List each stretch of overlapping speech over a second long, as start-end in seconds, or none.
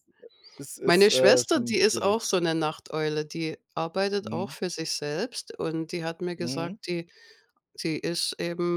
0.8-2.2